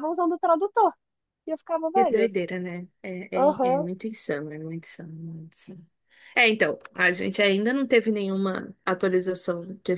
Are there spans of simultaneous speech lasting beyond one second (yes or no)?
no